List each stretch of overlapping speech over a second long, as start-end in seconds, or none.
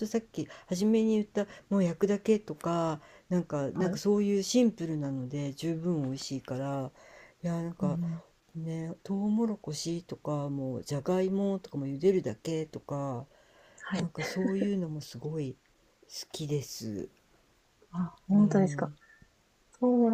none